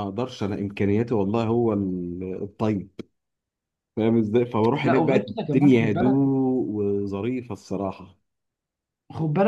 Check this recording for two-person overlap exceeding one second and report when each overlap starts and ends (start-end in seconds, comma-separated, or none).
4.8-6.2